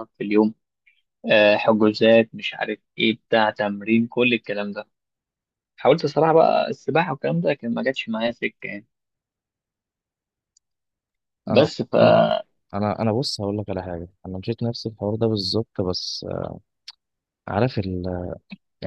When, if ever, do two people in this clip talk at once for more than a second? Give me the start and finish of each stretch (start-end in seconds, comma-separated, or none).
none